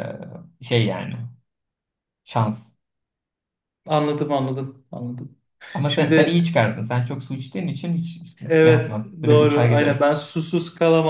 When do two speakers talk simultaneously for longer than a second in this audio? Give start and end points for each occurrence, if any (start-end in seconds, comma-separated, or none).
8.4-10.1